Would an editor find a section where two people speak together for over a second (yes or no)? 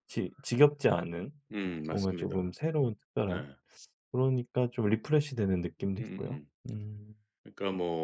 no